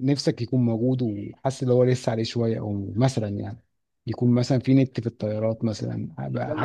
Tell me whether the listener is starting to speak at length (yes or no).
yes